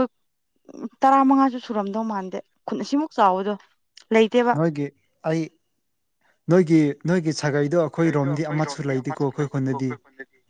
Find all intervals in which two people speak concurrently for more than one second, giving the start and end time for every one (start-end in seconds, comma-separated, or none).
8.2-9.9